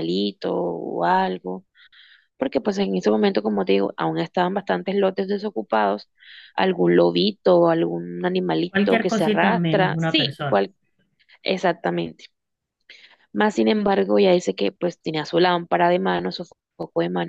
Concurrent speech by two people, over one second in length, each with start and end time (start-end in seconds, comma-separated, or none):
8.7-10.6